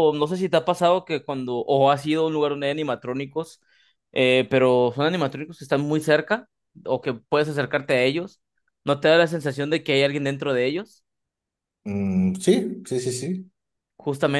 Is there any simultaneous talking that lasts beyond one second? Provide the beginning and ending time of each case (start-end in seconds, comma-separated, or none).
none